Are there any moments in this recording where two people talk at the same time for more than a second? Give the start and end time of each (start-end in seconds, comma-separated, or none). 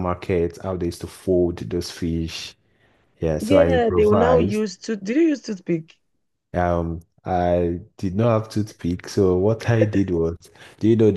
3.4-4.6